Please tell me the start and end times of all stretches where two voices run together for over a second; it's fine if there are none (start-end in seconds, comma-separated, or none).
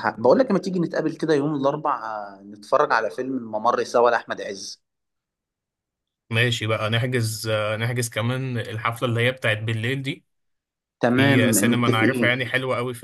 11.1-12.5